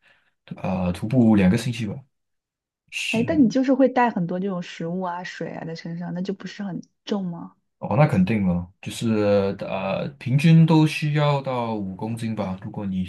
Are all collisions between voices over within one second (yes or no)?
yes